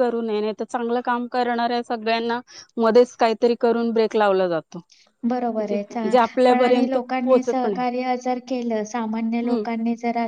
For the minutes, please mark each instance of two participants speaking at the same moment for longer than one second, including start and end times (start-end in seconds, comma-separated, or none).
5.7-7.8